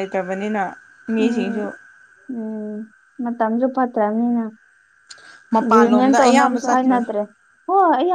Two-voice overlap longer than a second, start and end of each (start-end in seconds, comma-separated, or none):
5.7-7.0